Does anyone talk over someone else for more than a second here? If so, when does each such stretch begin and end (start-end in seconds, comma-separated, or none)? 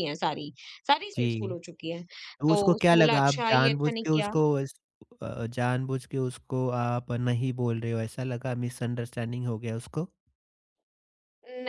2.5-4.3